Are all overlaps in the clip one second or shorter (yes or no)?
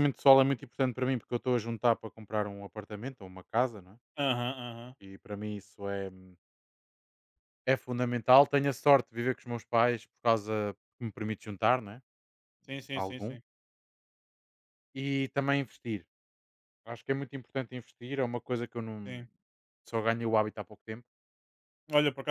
yes